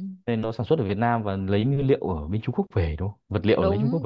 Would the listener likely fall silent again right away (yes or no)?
no